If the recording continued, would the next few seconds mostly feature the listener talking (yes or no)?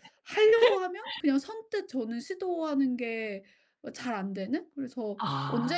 yes